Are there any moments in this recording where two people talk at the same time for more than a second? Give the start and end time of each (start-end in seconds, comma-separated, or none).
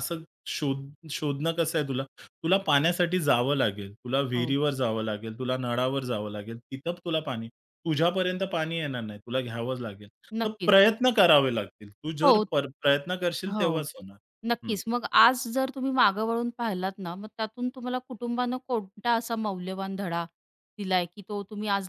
none